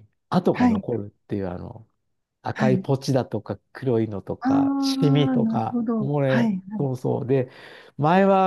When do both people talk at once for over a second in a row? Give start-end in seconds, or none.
4.4-6.6